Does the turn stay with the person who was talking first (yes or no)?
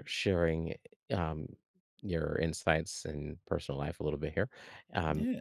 yes